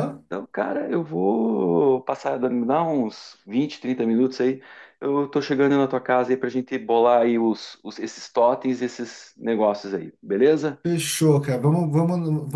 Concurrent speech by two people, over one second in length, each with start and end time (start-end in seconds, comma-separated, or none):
none